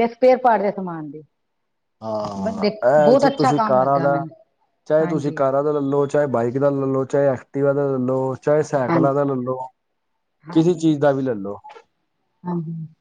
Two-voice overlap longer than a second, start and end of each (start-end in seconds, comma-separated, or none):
none